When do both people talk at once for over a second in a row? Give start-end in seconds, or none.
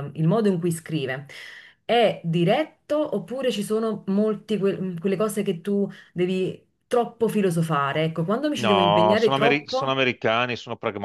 8.6-10.0